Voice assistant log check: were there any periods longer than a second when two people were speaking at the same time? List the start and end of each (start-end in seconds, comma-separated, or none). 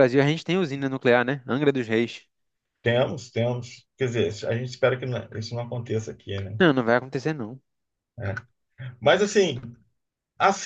none